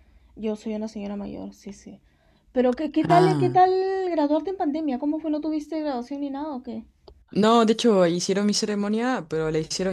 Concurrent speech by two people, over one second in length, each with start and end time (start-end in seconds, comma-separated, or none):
none